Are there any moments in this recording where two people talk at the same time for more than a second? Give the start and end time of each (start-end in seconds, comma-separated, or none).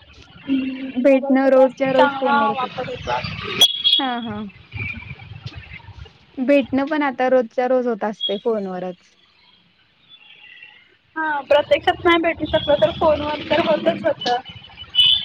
1.0-2.8